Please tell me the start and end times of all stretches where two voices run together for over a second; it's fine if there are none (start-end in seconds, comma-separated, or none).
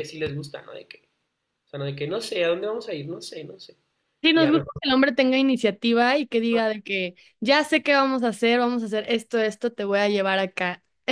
none